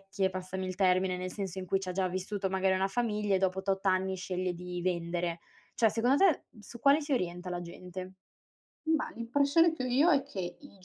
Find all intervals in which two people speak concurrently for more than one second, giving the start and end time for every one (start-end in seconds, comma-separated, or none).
none